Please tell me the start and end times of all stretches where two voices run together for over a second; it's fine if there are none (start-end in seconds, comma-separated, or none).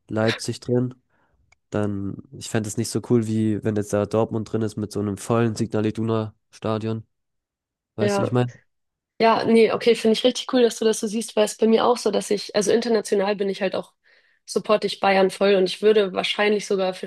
none